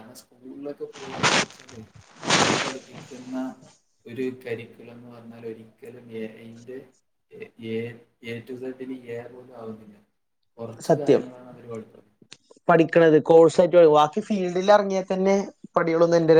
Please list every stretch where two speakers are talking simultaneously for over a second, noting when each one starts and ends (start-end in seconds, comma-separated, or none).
none